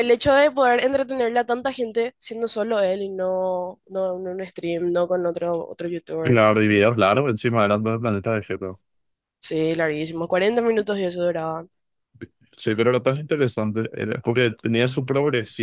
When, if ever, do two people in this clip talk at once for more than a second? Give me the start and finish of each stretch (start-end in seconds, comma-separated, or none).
none